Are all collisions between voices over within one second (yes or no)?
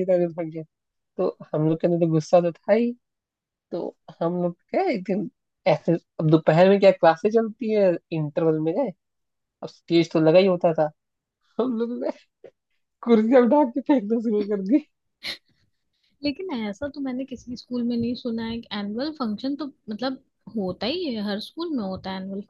yes